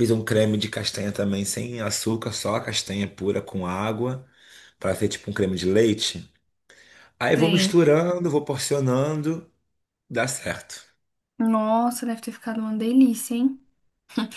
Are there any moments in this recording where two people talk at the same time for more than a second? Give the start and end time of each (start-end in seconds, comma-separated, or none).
none